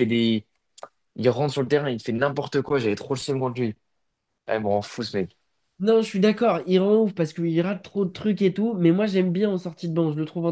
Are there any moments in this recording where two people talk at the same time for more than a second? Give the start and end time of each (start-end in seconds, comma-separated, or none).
none